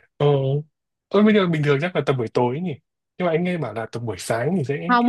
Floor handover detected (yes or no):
yes